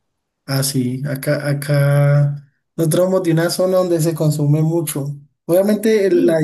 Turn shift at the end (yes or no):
no